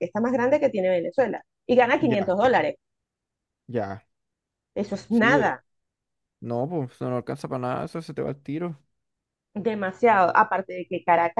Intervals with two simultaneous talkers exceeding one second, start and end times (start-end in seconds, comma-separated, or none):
none